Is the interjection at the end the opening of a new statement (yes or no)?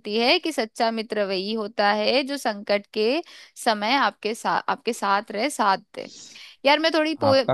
no